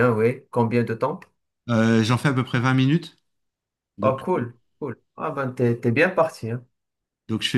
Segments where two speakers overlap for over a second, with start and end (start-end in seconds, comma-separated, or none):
none